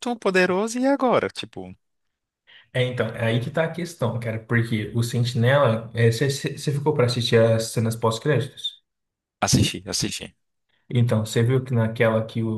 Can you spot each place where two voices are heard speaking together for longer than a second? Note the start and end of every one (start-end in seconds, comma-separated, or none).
none